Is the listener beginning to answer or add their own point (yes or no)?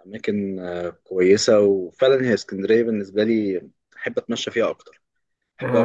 yes